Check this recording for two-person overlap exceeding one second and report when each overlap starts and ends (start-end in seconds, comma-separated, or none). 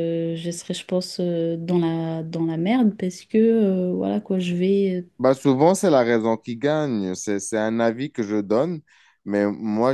none